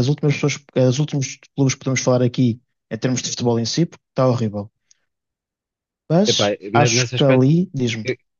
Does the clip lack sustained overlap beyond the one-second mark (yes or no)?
no